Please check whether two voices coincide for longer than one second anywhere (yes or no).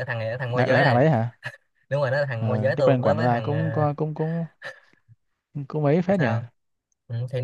yes